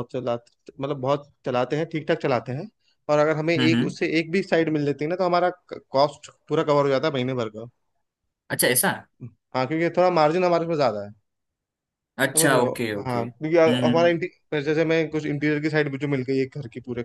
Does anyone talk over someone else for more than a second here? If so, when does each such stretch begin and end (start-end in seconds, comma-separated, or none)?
12.3-14.1